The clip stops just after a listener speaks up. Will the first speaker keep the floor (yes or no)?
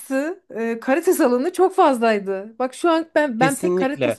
no